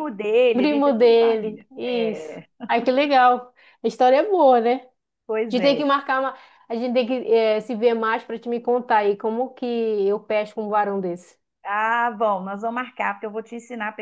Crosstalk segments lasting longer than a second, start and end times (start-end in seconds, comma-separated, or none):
0.5-2.3